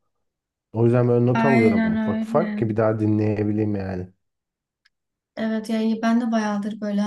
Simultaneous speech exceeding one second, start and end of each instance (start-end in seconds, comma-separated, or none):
1.3-2.7